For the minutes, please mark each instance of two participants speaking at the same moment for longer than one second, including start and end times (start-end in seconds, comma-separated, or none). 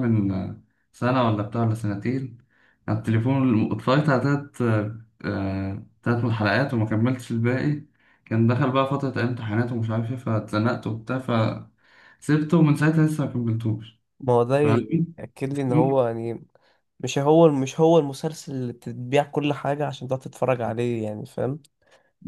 none